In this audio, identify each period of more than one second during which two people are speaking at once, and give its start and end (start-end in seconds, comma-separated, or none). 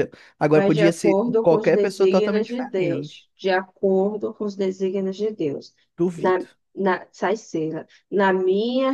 0.5-3.3